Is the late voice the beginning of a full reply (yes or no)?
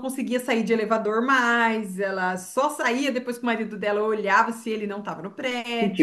yes